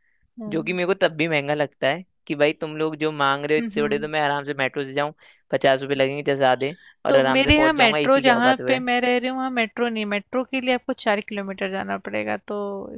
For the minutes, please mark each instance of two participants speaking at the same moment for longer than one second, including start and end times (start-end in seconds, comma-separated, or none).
7.1-8.8